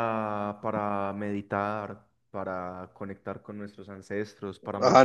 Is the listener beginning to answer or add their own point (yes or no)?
yes